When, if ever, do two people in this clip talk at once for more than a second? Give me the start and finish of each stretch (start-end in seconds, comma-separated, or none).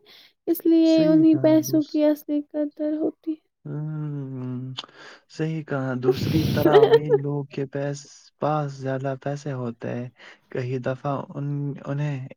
none